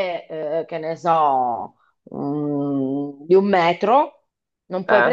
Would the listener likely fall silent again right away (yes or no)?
yes